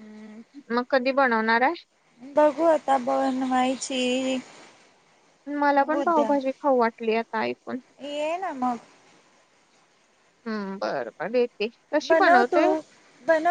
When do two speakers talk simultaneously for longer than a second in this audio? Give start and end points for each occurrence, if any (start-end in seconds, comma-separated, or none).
none